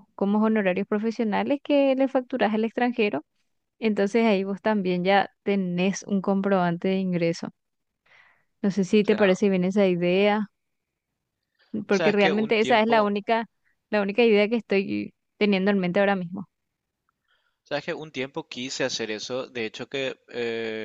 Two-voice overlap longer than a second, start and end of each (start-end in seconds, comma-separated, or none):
11.9-13.1